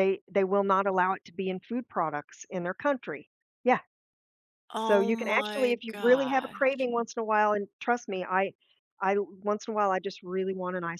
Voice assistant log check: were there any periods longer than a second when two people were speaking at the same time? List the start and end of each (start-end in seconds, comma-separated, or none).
4.8-6.8